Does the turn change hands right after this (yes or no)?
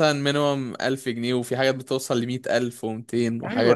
yes